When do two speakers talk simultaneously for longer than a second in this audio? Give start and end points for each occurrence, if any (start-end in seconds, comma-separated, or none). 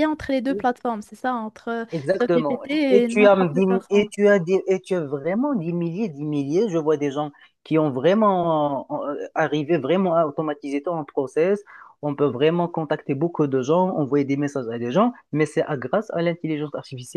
1.9-4.1